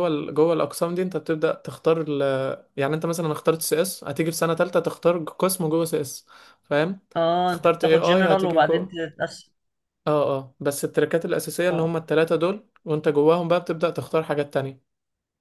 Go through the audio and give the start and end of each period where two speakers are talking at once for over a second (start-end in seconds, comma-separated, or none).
7.5-9.0